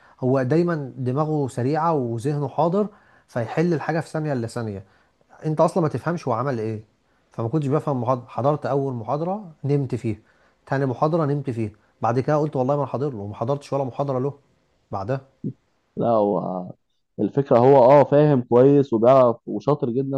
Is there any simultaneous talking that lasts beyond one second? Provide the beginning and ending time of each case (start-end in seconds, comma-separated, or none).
none